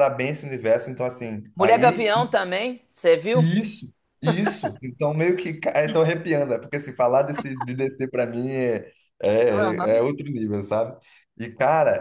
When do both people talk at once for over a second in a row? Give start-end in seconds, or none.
none